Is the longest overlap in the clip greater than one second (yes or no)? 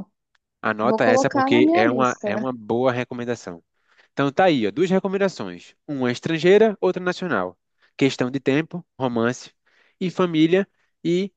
yes